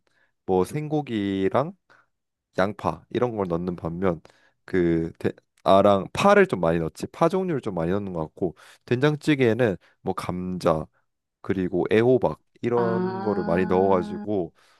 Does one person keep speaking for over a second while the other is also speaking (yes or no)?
yes